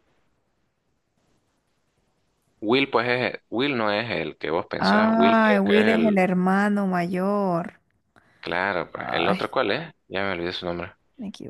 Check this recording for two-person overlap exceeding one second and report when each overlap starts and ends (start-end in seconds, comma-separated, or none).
4.8-6.2